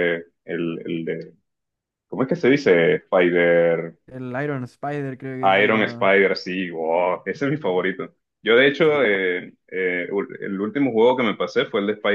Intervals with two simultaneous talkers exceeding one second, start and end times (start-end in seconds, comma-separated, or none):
none